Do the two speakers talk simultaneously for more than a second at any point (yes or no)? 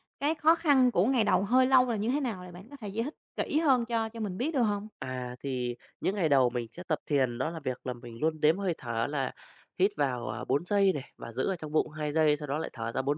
no